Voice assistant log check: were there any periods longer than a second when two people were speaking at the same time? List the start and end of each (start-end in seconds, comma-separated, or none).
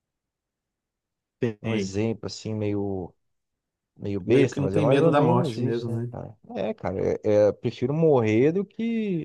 4.2-6.1